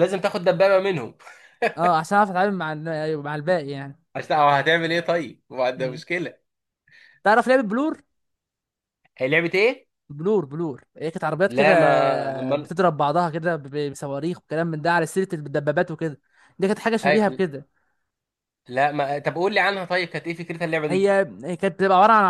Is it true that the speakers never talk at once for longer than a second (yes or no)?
yes